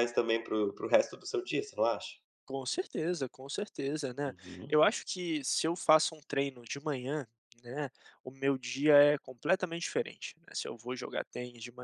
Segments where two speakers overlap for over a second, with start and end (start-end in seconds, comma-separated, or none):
none